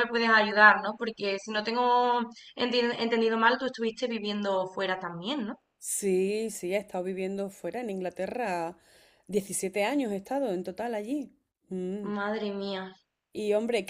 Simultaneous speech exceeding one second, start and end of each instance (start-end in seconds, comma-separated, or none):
none